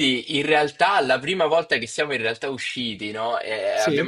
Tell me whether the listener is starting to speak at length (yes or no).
no